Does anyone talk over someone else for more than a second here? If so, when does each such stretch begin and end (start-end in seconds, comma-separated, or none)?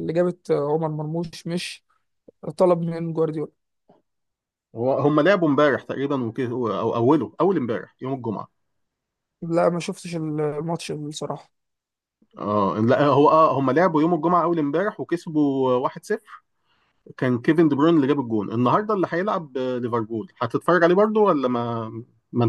none